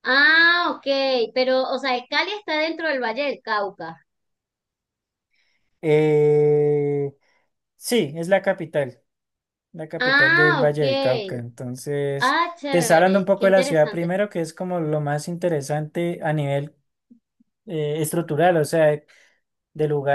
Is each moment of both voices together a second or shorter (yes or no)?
no